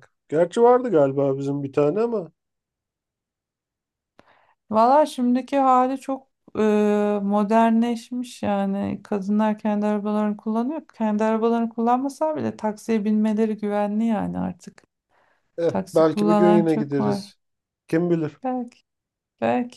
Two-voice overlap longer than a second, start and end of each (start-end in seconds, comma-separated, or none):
15.7-17.3